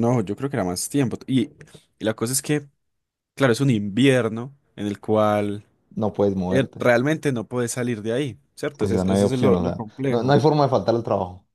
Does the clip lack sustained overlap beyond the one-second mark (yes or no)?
no